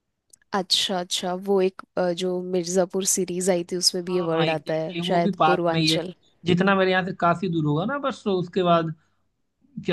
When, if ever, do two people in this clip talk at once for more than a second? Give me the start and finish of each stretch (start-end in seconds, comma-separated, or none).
4.1-6.0